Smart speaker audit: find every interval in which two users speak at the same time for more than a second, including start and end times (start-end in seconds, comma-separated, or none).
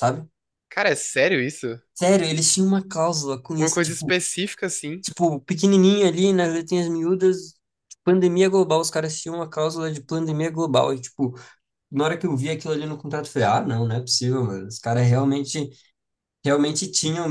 none